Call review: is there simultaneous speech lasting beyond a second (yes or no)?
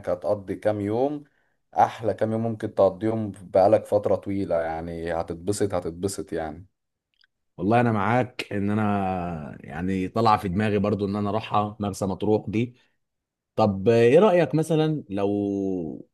no